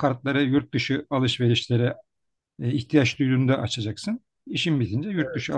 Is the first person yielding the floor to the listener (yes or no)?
no